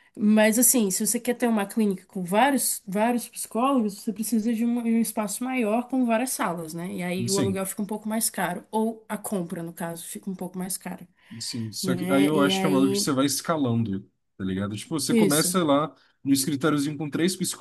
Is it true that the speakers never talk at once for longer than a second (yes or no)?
no